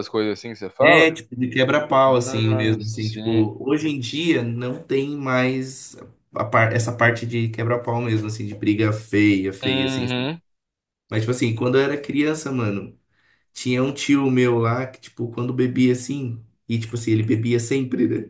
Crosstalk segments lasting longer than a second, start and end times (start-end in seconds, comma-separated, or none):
2.2-3.5